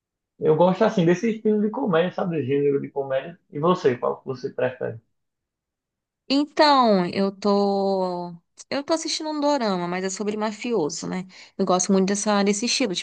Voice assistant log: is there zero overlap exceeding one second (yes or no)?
yes